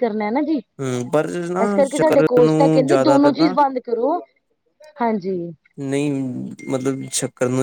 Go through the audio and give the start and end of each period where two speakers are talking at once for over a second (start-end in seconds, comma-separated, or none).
1.6-3.6